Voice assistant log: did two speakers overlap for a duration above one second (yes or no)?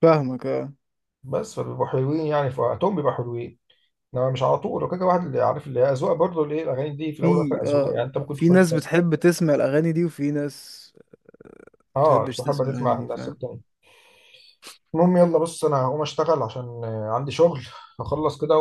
yes